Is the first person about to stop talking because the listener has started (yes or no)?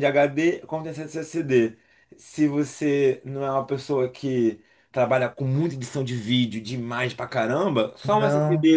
no